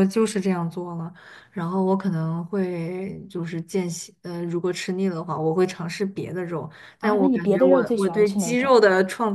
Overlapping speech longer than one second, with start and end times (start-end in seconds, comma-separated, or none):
7.0-8.8